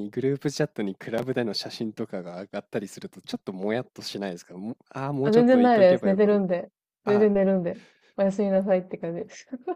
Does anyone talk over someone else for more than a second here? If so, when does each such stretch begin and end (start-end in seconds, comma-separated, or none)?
5.2-6.4